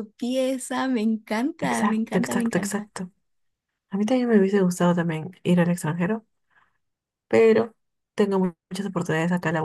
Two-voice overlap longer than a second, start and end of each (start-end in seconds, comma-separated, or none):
1.6-2.9